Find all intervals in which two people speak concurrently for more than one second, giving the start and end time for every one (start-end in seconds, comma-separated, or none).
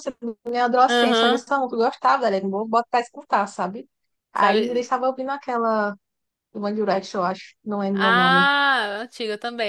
none